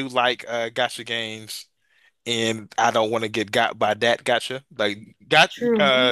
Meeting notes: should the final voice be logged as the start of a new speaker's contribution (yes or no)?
no